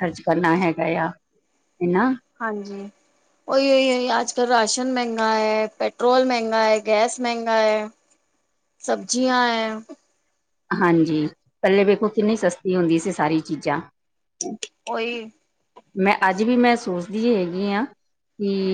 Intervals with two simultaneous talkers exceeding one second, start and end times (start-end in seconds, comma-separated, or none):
none